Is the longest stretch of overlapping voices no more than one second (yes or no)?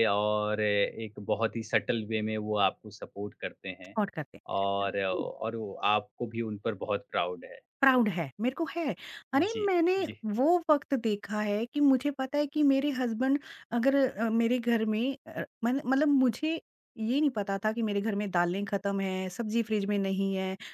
yes